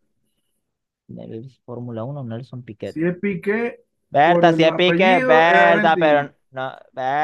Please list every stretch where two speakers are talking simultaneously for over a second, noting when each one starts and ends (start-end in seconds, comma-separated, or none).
4.2-6.3